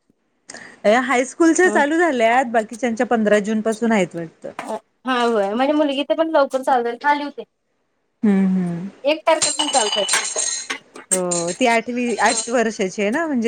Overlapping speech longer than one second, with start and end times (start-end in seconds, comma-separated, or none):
none